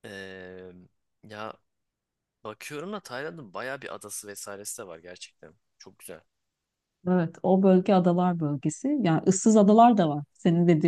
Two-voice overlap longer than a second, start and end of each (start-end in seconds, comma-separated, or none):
none